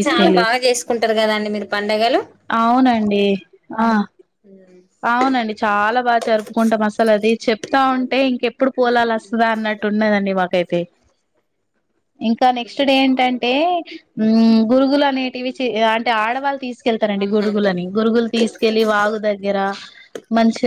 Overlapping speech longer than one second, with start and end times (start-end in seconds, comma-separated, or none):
none